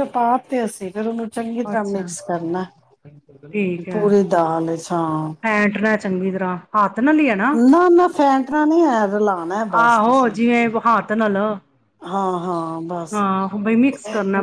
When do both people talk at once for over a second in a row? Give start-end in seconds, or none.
none